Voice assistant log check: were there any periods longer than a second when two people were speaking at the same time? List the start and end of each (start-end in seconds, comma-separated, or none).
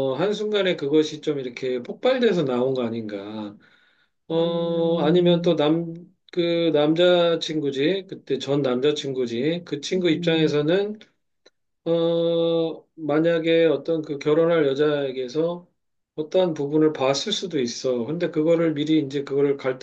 4.3-5.6